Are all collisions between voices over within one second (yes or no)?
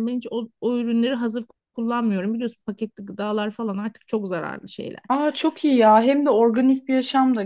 yes